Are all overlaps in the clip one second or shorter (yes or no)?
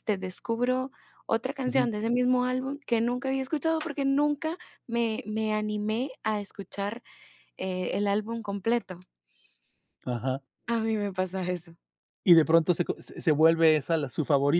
yes